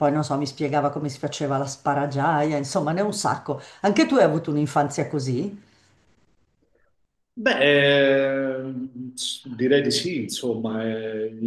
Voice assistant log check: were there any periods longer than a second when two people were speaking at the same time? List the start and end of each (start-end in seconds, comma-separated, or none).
none